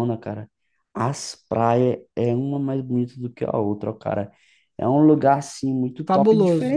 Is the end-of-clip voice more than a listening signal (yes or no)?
no